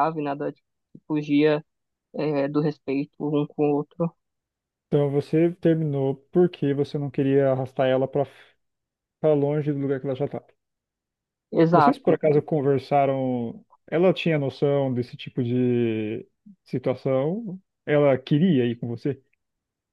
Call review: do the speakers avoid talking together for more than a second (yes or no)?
yes